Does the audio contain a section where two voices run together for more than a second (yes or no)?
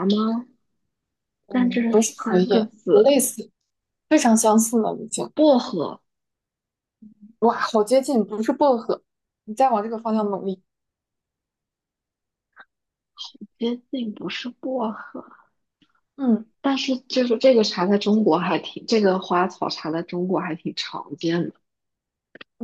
yes